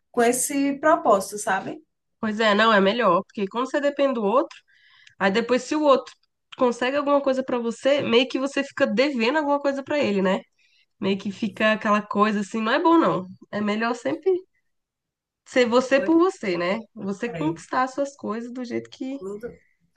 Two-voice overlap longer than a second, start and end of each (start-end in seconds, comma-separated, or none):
none